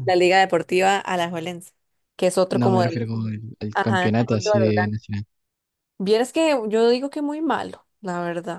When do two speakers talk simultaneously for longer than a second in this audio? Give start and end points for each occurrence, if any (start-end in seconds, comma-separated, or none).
3.7-5.0